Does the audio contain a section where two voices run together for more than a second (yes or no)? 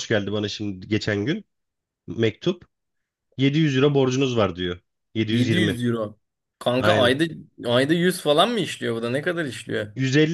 no